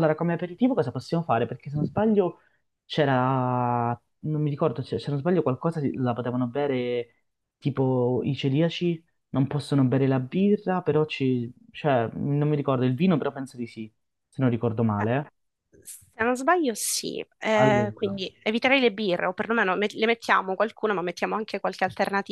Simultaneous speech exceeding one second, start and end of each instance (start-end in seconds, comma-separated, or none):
none